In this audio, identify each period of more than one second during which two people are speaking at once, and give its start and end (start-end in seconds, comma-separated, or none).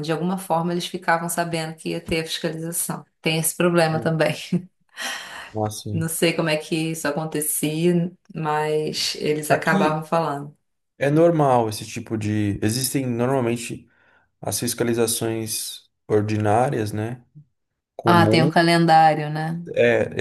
none